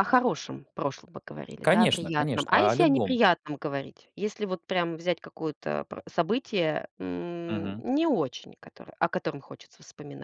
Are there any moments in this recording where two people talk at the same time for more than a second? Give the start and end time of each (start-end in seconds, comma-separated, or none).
1.6-3.2